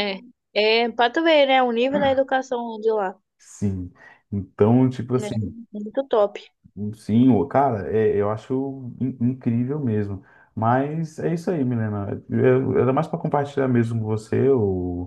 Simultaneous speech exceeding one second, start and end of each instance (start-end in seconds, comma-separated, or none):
none